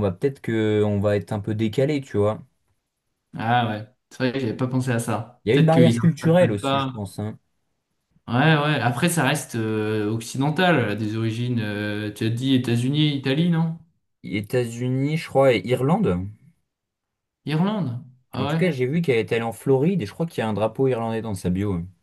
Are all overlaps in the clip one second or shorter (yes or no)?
no